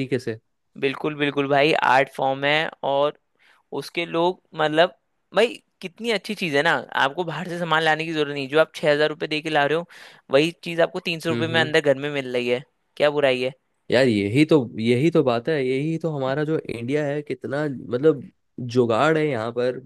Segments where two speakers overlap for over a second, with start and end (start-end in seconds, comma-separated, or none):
none